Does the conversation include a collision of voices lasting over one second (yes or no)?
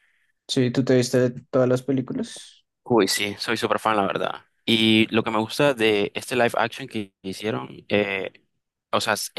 no